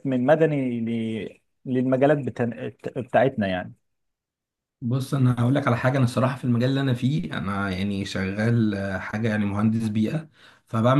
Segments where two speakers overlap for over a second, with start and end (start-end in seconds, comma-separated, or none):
none